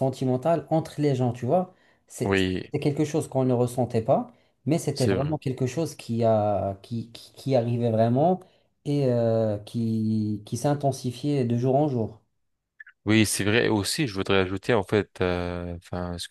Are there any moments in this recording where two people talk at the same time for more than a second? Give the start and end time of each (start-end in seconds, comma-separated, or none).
none